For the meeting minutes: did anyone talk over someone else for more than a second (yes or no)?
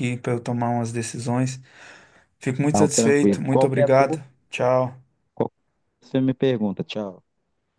yes